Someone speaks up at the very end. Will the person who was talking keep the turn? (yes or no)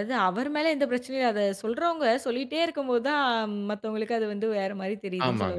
no